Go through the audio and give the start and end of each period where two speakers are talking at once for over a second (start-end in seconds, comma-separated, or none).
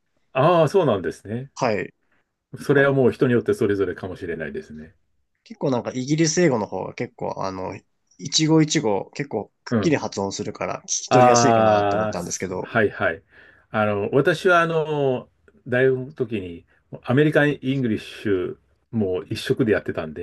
11.1-12.7